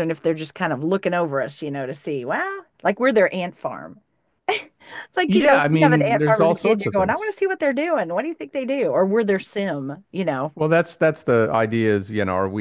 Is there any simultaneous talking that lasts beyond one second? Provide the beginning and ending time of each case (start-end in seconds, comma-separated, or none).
5.3-7.3